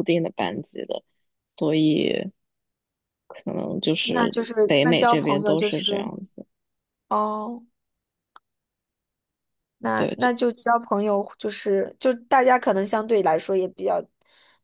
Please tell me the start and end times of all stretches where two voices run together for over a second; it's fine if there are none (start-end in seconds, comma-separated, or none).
4.0-6.1